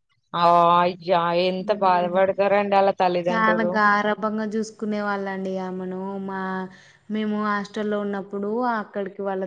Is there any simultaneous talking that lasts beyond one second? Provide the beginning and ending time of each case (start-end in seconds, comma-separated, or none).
none